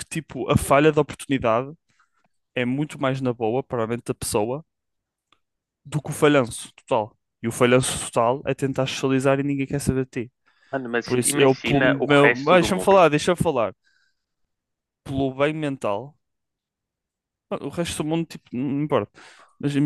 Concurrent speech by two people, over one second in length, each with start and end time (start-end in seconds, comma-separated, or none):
11.0-13.0